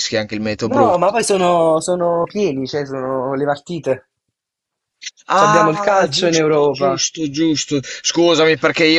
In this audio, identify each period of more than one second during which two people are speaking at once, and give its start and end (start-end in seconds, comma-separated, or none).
5.4-7.0